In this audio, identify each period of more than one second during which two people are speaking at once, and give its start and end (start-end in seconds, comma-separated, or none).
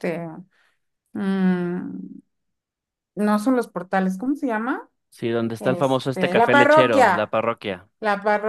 5.6-7.3